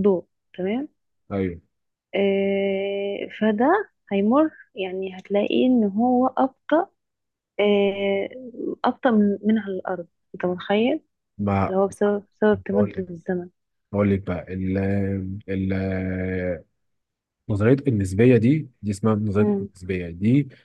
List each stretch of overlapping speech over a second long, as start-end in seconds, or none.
none